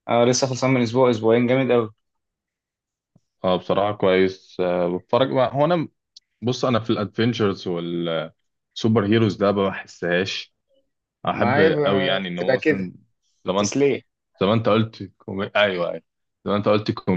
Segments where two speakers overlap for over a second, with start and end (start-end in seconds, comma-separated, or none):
11.3-12.9